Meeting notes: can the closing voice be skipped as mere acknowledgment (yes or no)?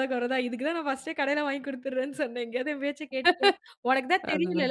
yes